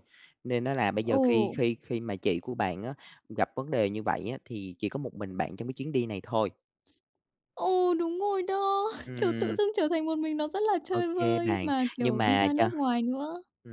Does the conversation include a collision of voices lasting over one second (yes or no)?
yes